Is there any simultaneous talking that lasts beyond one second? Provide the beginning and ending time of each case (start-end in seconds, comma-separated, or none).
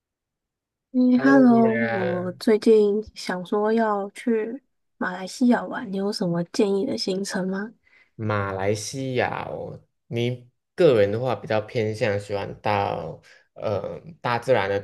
1.1-2.4